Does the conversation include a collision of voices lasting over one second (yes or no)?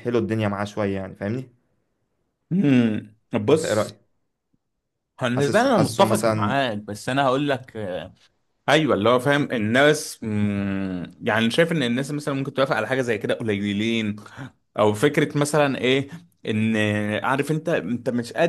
yes